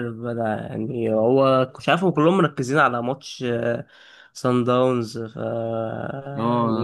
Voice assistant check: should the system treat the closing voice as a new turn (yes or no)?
yes